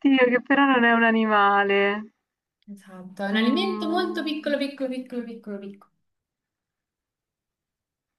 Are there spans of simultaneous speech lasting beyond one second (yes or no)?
yes